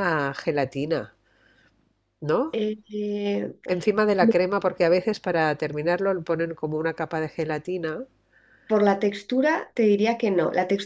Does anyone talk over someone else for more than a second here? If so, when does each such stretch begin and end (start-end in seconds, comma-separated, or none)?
none